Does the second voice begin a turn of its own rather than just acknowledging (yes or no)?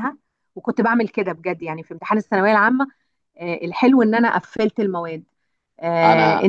no